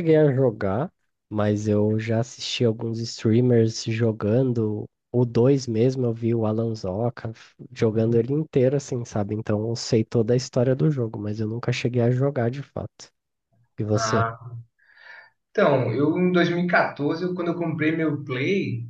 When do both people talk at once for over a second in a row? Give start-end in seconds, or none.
none